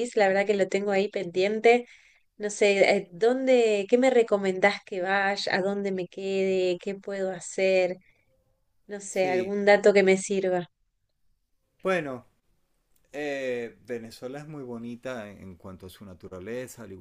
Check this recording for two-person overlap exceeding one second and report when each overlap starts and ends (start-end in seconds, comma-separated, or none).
none